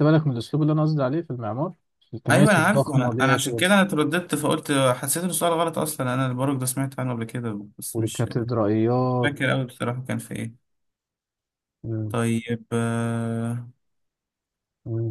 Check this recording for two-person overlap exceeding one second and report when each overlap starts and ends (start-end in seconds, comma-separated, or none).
2.3-3.6